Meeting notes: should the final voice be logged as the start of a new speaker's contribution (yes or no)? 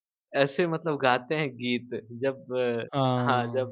no